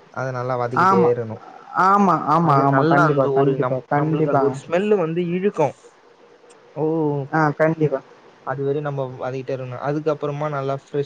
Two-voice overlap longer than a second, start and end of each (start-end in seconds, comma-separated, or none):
2.5-4.5